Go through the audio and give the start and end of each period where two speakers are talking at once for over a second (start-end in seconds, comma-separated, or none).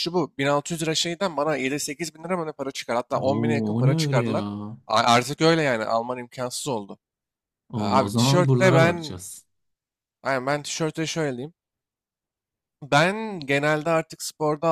3.2-4.4, 7.8-9.2